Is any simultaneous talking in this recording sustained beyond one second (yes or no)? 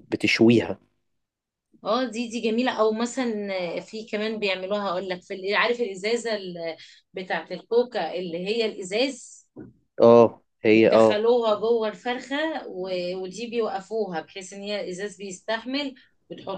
no